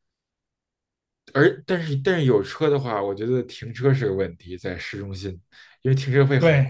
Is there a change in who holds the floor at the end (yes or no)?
yes